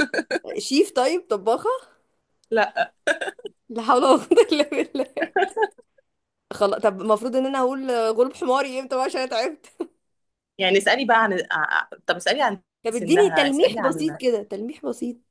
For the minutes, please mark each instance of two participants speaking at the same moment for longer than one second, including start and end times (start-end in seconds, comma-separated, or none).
12.8-14.2